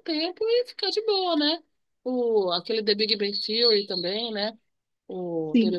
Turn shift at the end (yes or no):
yes